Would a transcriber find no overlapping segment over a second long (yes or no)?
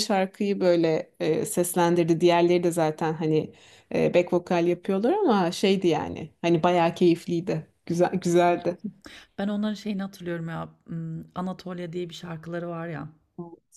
yes